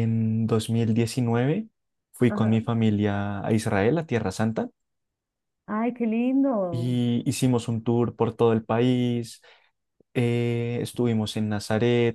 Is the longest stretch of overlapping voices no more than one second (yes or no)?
yes